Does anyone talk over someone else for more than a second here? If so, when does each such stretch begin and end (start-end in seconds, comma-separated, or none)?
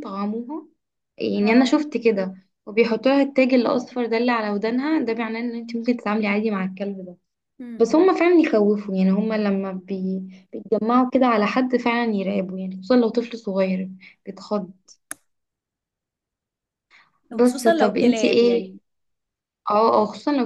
17.3-18.8